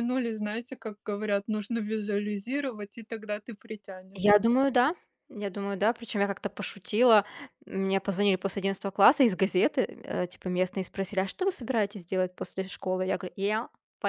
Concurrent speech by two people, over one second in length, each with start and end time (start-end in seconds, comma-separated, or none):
none